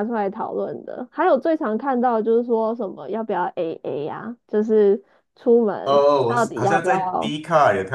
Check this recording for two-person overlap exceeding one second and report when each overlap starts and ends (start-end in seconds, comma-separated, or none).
5.8-7.3